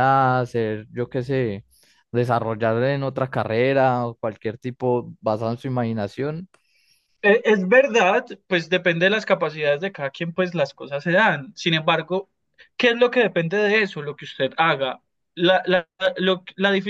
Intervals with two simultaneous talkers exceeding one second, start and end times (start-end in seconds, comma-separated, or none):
none